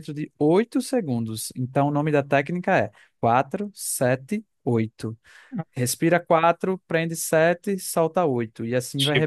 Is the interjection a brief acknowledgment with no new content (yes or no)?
no